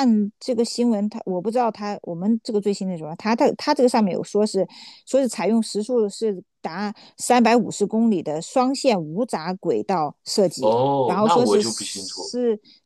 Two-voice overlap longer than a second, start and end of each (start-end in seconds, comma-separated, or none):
10.6-12.3